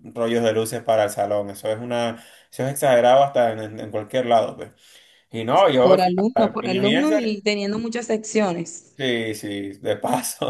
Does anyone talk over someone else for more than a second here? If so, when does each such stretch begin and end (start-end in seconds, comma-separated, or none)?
5.8-7.4